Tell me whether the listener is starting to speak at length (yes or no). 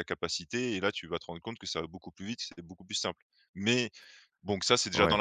yes